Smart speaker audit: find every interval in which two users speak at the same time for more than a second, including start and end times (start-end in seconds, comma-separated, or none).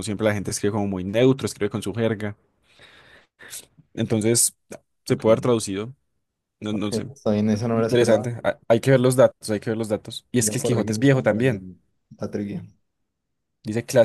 10.4-11.6